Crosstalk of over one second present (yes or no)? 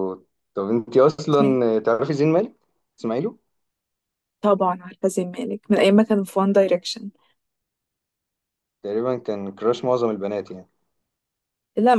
no